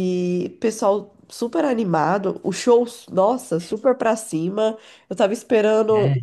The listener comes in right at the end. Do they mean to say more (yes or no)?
no